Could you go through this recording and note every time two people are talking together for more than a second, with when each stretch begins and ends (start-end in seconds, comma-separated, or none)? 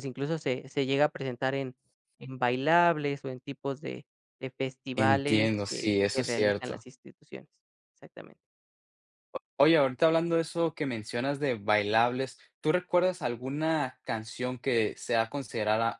5.0-6.8